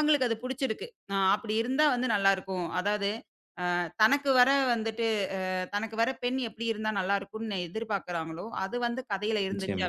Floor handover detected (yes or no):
no